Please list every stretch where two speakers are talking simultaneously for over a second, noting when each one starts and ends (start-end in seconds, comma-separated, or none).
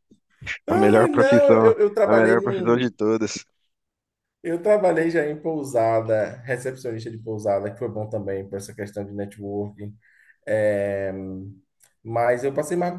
0.7-2.9